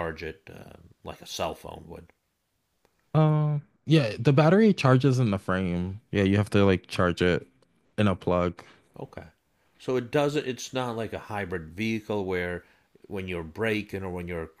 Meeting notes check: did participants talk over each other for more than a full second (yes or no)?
no